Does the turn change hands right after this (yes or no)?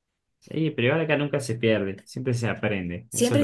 yes